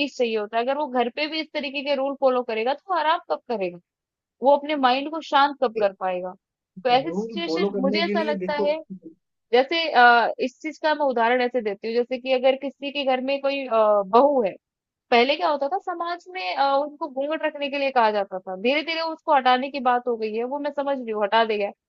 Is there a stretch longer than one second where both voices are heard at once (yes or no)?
yes